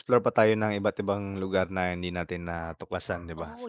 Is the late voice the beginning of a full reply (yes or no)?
yes